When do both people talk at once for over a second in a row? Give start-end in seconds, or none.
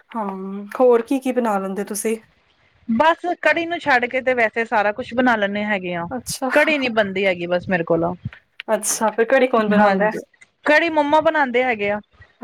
none